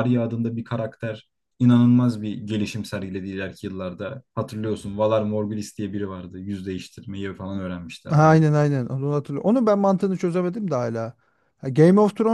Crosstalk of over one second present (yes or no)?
no